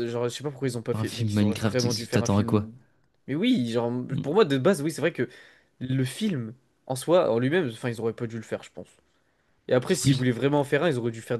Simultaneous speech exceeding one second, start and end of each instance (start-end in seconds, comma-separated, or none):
0.9-2.7